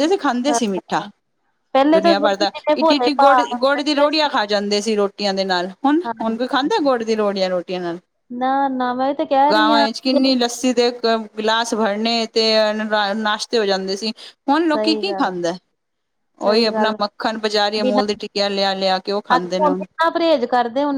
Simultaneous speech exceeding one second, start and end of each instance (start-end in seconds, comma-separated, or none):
1.9-4.3